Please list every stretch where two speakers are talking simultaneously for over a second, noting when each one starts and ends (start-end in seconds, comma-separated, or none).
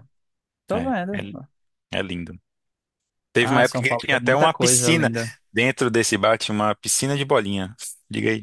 3.4-5.1